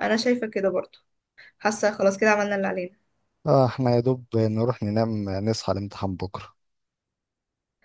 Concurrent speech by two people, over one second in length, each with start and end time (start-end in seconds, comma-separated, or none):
none